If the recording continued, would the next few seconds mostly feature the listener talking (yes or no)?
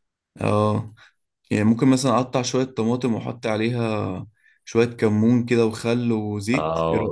yes